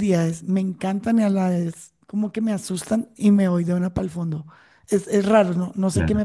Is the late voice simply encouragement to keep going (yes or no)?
yes